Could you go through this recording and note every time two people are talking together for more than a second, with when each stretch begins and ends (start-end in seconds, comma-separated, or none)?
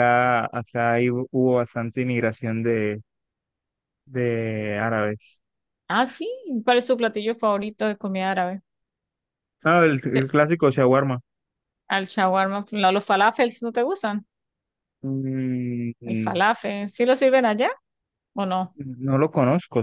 none